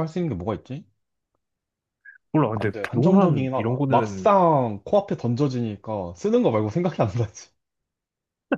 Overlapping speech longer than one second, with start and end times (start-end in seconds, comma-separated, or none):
2.5-4.3